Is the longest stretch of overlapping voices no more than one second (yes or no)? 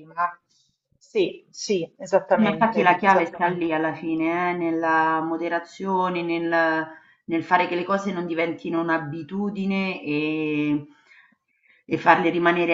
no